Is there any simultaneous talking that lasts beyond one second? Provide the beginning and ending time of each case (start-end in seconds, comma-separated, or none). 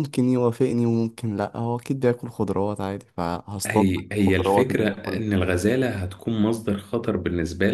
3.7-5.4